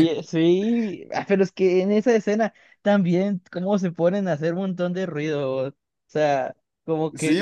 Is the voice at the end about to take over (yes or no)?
yes